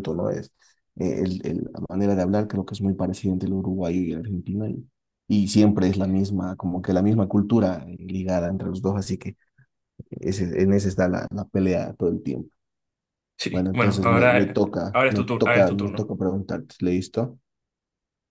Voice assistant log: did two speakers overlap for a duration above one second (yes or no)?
yes